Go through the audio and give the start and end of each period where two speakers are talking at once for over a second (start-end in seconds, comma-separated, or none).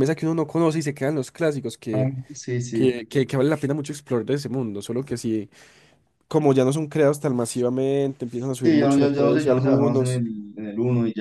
8.5-10.2